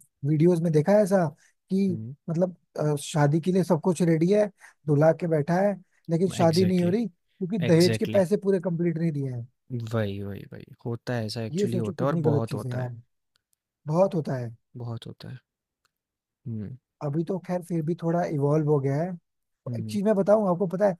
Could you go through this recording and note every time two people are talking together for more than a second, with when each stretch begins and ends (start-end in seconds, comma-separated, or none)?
11.5-12.9